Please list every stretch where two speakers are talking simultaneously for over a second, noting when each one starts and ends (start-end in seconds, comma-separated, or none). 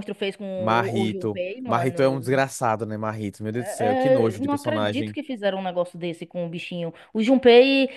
0.5-2.4, 3.5-5.2